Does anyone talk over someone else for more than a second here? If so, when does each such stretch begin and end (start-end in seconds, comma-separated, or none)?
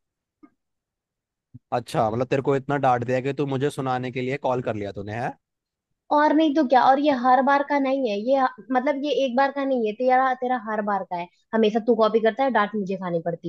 none